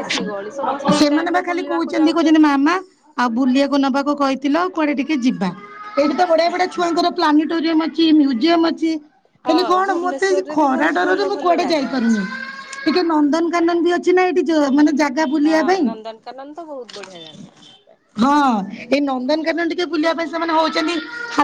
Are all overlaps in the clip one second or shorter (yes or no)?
no